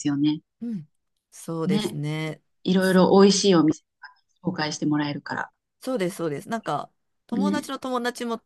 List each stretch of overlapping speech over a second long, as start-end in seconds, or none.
none